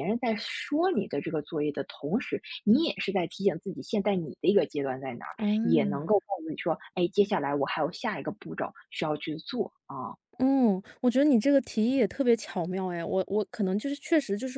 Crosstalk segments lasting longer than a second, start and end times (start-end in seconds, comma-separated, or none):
none